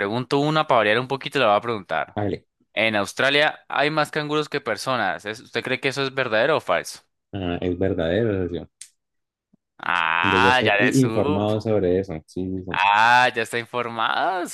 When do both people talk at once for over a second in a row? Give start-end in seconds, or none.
10.2-11.7